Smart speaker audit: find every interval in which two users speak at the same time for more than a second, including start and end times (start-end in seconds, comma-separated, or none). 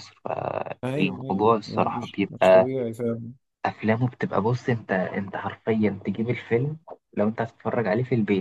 0.8-2.7